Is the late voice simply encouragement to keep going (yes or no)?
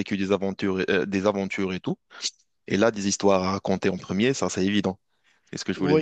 no